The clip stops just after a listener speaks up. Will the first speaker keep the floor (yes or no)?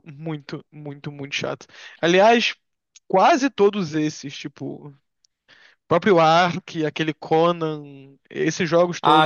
no